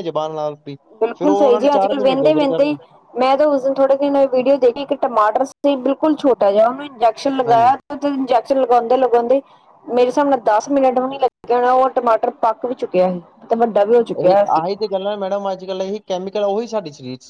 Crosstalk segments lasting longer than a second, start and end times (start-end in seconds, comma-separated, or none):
1.2-2.7